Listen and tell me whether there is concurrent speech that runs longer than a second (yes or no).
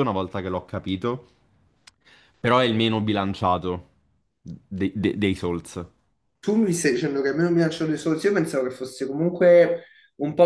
no